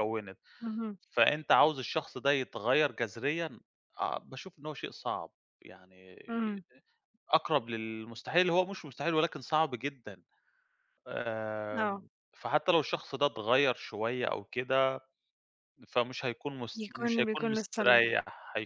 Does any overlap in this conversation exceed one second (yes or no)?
yes